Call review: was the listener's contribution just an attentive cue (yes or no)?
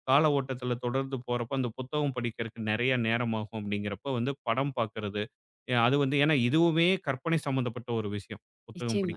yes